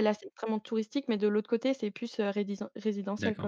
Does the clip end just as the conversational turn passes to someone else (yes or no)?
yes